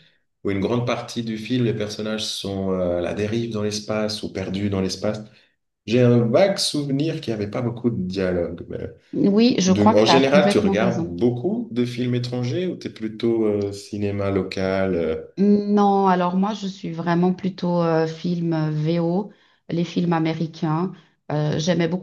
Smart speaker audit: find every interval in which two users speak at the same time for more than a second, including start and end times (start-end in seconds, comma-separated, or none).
9.7-11.1